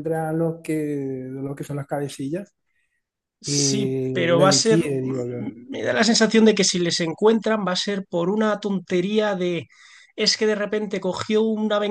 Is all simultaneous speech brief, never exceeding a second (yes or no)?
no